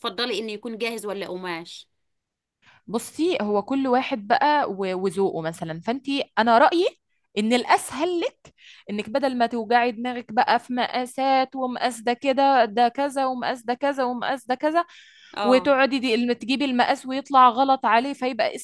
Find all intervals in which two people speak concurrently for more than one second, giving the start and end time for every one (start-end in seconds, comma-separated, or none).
none